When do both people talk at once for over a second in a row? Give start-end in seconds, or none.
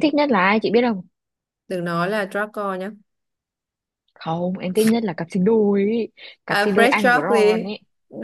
6.5-7.7